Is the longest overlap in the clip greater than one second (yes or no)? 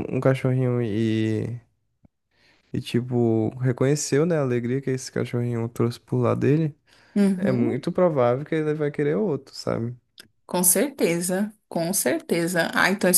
no